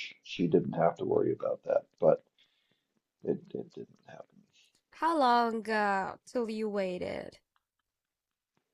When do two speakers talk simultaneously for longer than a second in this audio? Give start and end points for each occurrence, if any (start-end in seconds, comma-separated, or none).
none